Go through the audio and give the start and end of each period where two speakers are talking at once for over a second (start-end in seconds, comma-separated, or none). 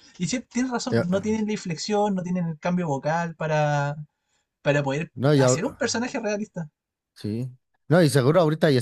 none